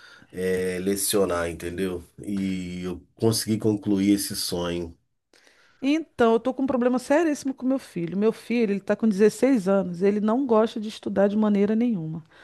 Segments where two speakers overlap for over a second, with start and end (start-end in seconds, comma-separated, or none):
none